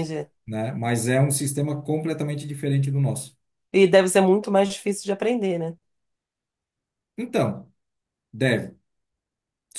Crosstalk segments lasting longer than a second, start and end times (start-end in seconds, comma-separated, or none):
none